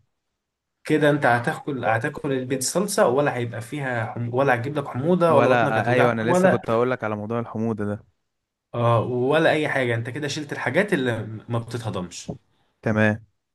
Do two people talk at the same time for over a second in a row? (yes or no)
yes